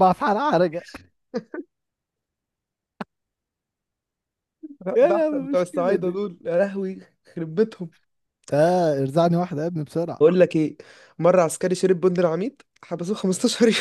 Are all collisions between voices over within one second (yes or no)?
no